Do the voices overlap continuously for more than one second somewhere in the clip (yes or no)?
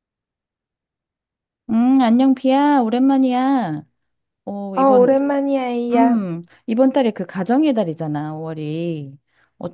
no